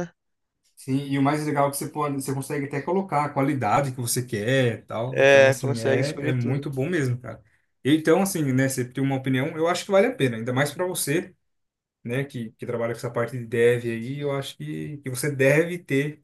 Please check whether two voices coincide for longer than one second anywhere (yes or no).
yes